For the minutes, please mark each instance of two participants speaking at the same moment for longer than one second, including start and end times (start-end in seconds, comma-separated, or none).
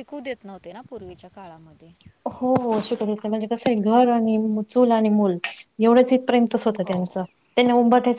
none